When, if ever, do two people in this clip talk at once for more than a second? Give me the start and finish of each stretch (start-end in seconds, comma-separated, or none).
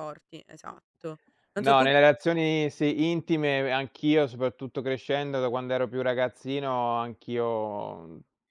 none